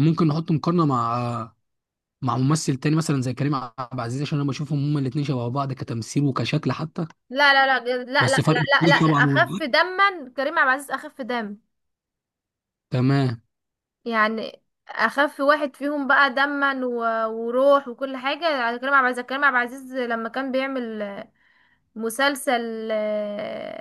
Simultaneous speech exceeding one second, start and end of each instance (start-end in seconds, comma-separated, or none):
8.2-9.6